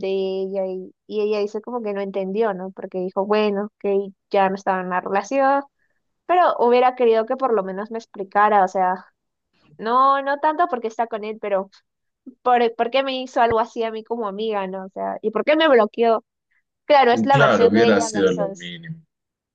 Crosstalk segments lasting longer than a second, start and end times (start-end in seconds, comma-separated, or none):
17.3-18.7